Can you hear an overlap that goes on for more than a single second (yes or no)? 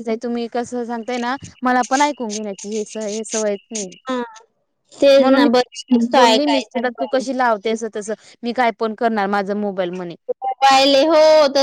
yes